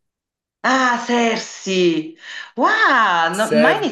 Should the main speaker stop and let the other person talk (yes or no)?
no